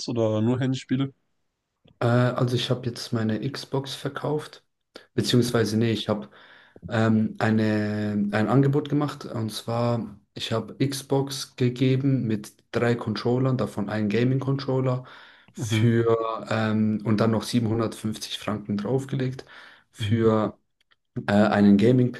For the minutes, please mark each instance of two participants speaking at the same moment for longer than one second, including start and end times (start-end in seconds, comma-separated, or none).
none